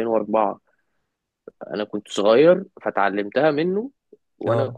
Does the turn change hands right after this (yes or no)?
no